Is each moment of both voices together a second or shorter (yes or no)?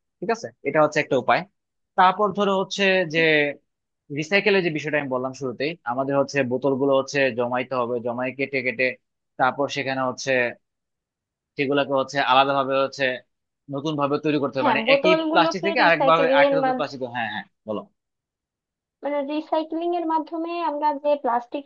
no